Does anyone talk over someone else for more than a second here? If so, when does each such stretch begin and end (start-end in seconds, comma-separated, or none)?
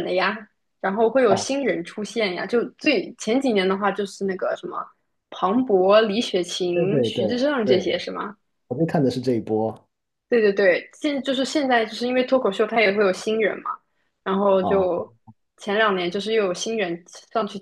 6.7-8.0